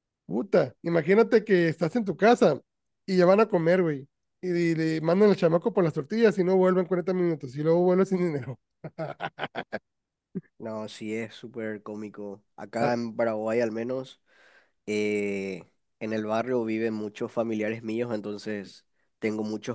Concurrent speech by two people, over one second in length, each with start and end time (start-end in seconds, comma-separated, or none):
none